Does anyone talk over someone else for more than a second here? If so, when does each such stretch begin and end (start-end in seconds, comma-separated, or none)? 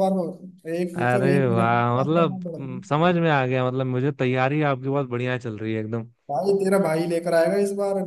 0.9-2.8